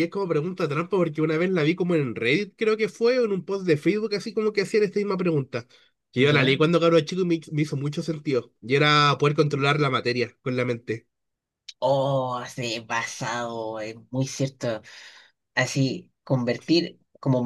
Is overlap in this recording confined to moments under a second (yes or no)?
yes